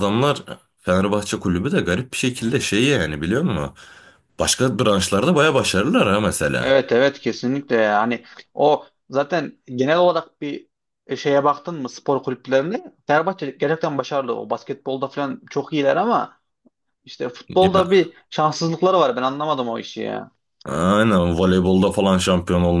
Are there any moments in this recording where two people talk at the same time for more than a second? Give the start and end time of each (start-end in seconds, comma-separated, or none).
none